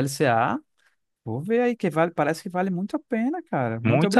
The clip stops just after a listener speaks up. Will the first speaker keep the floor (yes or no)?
no